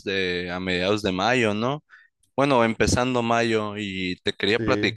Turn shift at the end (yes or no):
no